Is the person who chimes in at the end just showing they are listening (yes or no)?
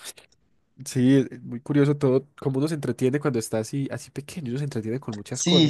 no